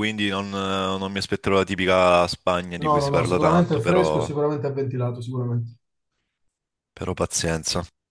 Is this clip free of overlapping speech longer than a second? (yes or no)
no